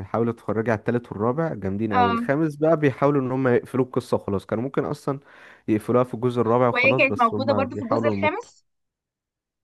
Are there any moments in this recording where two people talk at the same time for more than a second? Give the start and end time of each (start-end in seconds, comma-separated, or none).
6.7-8.5